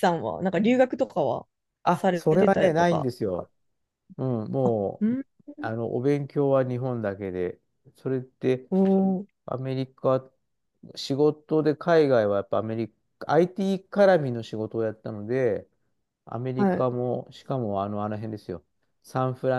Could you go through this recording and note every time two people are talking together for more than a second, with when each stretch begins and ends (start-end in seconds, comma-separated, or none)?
1.9-3.5